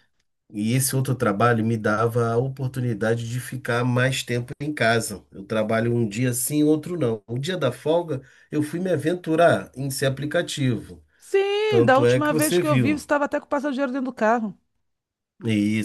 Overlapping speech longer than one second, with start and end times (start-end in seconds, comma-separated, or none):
11.7-13.1